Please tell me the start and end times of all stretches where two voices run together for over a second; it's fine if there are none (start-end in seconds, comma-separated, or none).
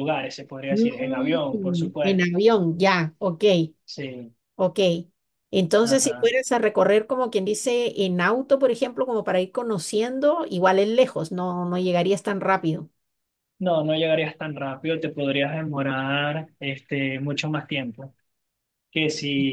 0.7-2.3